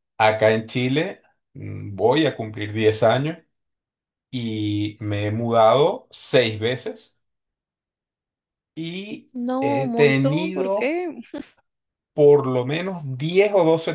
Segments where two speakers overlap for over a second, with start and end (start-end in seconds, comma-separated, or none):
9.3-11.0